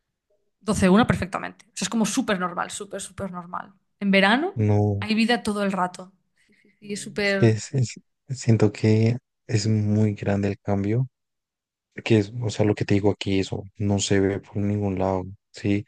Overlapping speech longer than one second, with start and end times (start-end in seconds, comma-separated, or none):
none